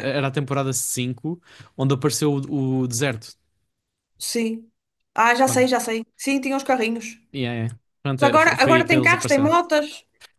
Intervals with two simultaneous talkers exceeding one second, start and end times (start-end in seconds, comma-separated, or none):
8.1-9.6